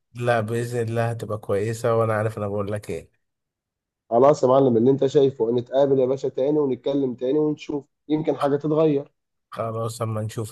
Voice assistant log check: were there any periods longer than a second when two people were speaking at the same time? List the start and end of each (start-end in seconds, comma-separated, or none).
none